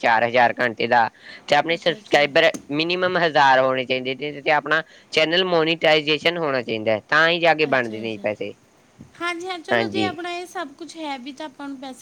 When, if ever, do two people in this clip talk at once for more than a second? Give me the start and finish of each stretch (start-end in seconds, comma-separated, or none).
none